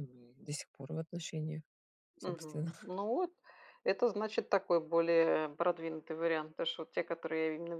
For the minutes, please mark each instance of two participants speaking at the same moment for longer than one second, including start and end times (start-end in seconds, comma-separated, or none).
none